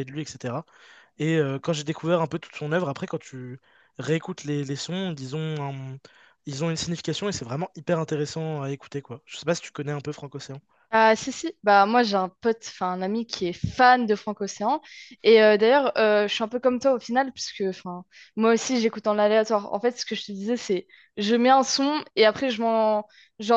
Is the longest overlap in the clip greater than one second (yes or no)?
no